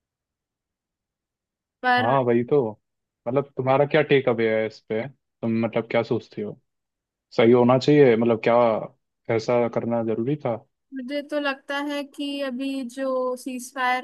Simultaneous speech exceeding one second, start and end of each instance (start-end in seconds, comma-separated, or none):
none